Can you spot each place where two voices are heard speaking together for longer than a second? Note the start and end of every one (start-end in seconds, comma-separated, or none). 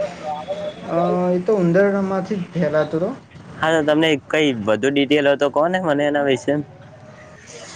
none